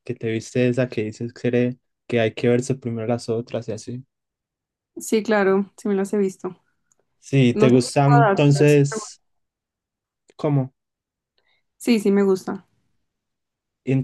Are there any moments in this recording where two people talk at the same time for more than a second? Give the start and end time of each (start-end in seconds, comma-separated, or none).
7.5-9.2